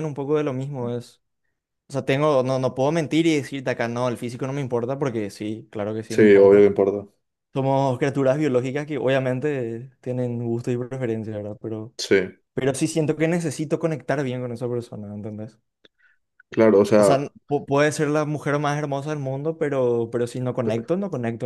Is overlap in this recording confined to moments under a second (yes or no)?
yes